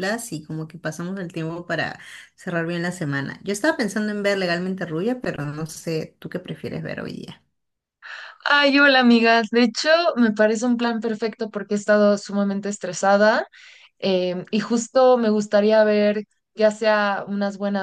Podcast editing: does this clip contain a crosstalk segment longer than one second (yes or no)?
no